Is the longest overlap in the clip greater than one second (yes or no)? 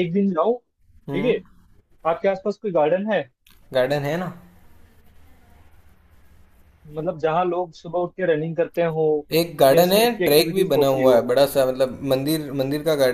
yes